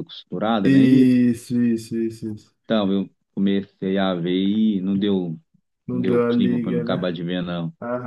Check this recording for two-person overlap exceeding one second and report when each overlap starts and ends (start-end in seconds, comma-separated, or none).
5.9-7.1